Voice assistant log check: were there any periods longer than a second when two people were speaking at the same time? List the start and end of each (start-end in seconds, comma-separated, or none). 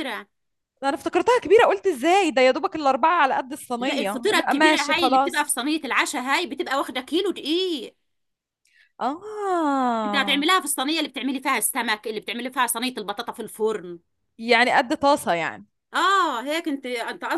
3.8-5.5